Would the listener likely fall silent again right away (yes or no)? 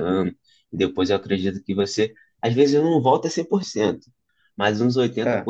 yes